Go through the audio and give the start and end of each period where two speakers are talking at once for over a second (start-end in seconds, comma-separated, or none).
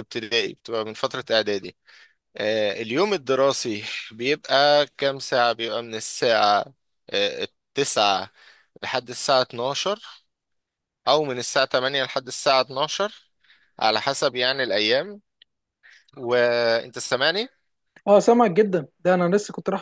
none